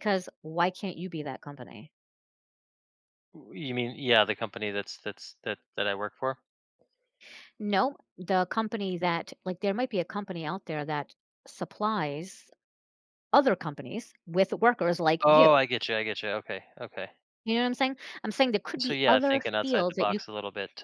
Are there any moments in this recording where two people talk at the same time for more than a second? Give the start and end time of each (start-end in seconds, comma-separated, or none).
18.8-20.2